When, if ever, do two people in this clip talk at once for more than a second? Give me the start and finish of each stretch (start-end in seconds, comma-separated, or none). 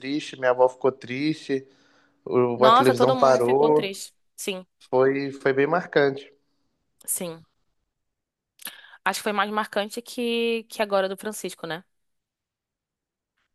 2.6-3.9